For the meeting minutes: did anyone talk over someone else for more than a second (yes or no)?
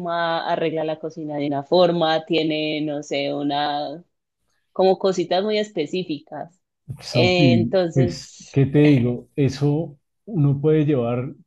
yes